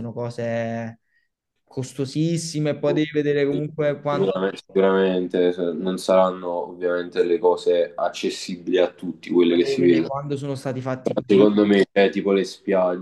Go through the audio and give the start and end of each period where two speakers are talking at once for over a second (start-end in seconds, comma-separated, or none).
none